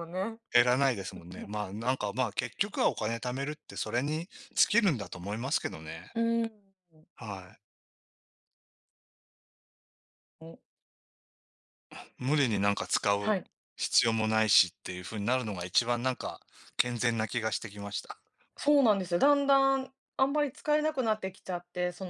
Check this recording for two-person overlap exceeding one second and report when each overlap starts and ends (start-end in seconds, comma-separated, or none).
none